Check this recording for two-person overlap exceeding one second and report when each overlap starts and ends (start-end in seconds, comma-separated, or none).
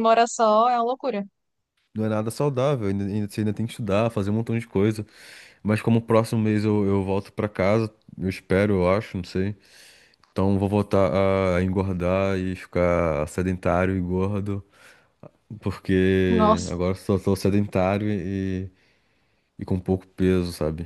none